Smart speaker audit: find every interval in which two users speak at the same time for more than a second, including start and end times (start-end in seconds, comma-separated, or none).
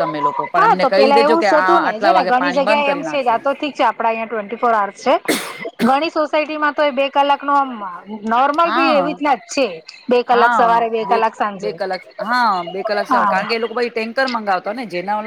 0.6-3.4